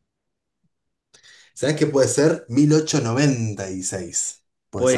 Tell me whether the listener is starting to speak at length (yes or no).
yes